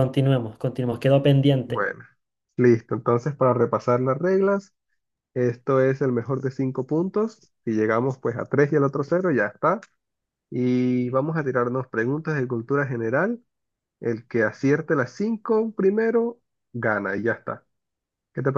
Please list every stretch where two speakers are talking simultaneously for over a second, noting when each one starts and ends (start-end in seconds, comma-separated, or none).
none